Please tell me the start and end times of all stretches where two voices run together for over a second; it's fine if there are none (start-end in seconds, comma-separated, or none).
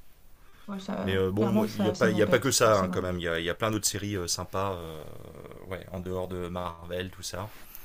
1.0-3.2